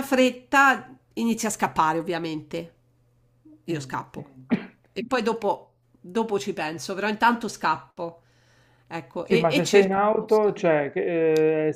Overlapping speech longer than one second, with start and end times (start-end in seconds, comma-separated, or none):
9.2-10.5